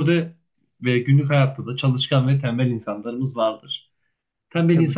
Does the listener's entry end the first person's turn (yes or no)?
no